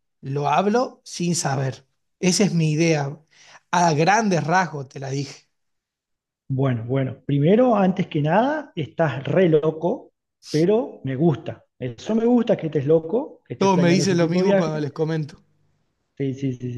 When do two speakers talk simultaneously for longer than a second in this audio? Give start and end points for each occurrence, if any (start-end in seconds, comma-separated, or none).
13.6-14.9